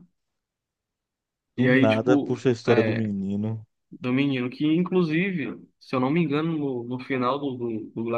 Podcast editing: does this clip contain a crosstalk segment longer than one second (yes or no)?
yes